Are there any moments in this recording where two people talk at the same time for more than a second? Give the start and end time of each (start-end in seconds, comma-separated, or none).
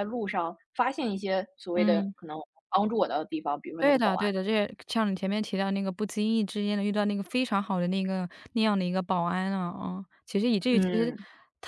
none